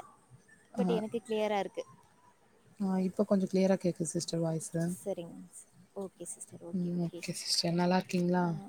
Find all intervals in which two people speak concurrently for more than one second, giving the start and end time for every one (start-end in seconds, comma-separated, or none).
none